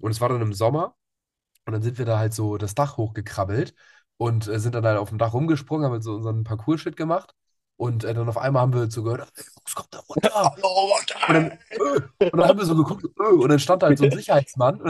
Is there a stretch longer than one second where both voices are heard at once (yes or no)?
no